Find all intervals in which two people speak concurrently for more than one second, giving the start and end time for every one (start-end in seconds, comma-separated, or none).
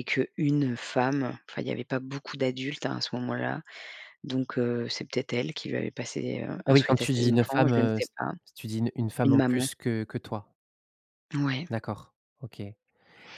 6.7-8.1